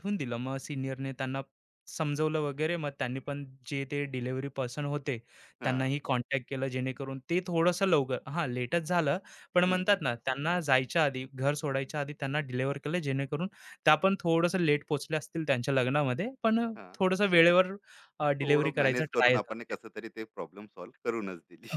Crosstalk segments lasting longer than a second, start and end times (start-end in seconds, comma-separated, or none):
18.4-19.7